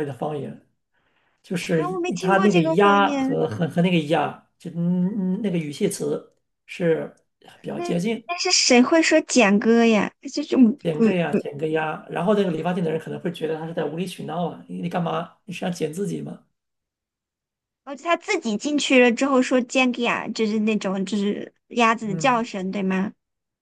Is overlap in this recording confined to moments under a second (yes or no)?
no